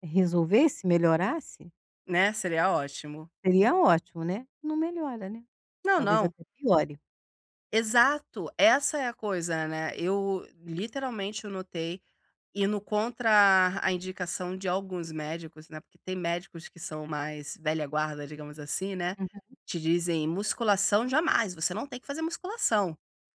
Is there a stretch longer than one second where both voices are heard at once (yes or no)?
no